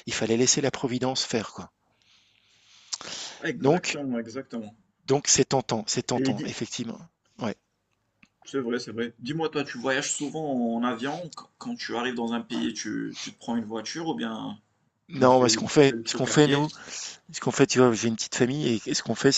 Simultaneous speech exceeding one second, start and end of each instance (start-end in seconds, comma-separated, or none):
15.1-16.6